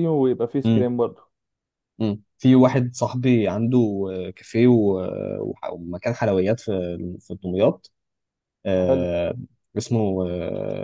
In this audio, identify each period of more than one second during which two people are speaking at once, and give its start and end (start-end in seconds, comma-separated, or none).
none